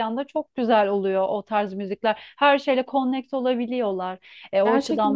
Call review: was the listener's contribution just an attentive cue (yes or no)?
no